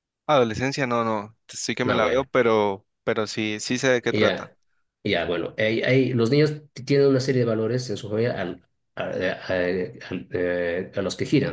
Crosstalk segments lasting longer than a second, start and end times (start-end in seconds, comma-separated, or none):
none